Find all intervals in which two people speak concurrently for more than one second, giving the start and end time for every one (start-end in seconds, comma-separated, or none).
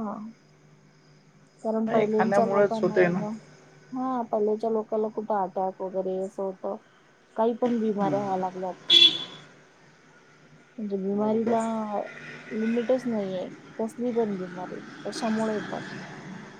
1.9-3.2